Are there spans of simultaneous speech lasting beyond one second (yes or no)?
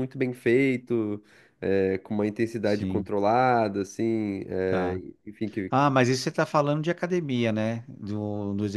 no